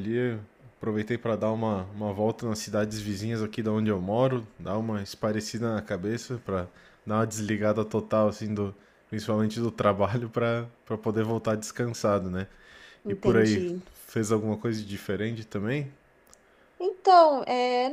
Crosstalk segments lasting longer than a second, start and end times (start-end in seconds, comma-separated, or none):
none